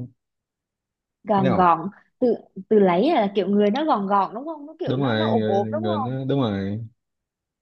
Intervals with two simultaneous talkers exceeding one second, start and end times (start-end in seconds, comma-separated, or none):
4.8-6.2